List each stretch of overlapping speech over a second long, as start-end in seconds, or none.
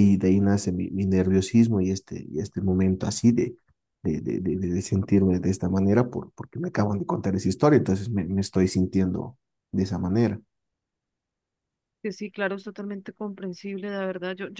none